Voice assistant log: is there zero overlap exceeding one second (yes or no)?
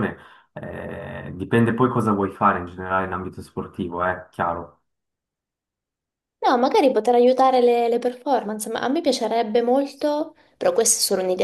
yes